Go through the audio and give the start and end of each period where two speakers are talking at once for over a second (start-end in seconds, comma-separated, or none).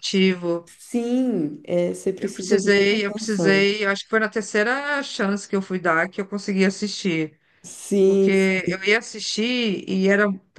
2.2-3.7